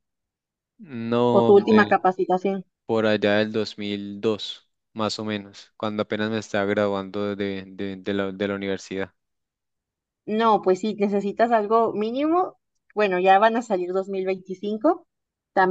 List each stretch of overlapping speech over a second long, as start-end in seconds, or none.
none